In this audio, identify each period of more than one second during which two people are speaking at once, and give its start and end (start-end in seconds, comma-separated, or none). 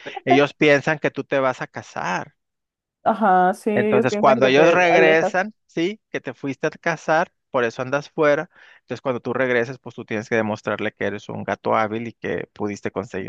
3.7-5.3